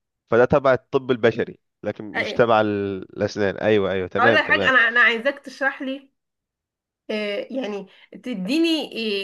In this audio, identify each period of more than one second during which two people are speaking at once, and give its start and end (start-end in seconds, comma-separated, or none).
none